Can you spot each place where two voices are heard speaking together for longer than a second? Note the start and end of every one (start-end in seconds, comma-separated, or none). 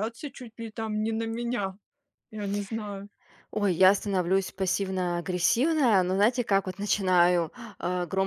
none